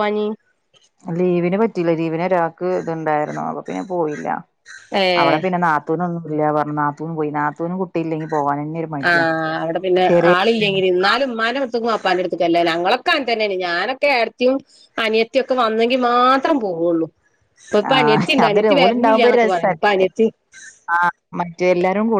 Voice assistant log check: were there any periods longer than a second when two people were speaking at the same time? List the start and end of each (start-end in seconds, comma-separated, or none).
17.9-19.7